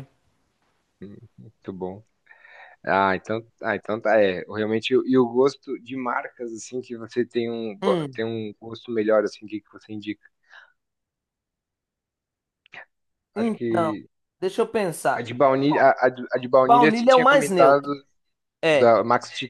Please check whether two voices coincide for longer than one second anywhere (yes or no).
yes